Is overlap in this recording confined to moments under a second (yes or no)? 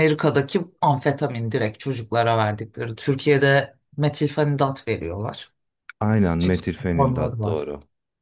no